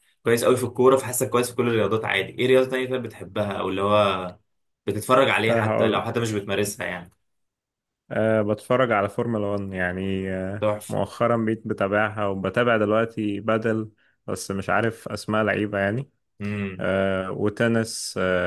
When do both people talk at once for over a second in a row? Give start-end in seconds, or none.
none